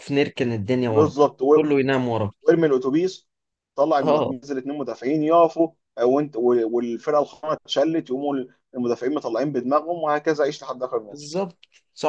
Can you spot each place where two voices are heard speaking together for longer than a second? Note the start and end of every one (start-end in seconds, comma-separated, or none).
none